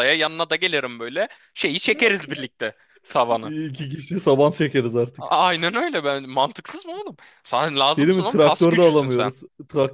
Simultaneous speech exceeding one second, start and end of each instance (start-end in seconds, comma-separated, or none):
7.9-9.3